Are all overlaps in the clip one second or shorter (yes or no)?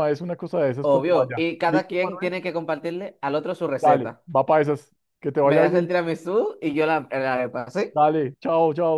no